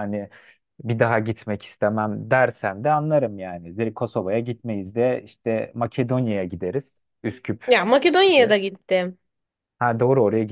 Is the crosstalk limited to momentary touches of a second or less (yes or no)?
yes